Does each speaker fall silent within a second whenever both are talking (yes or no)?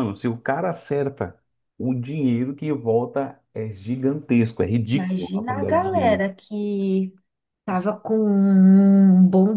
no